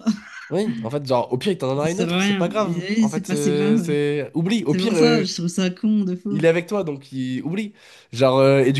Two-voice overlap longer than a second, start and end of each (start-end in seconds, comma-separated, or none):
1.8-4.0